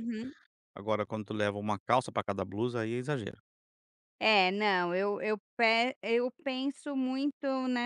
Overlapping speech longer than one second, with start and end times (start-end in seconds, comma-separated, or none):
none